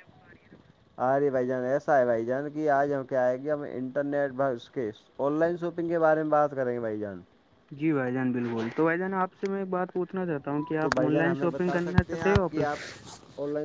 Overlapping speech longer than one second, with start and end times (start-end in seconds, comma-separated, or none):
10.8-12.7